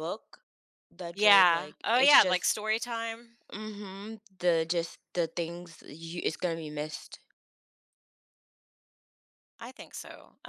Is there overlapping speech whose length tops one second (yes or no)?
yes